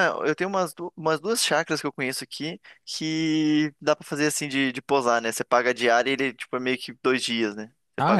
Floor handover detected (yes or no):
yes